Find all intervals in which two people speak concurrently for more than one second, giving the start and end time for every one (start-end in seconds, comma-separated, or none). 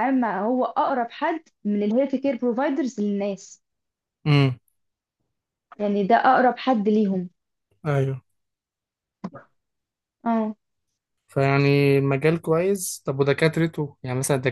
none